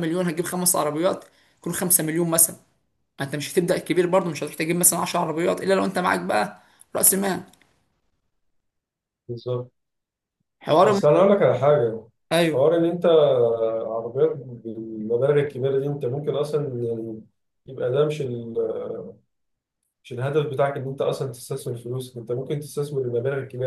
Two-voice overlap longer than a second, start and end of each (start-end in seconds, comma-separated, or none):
none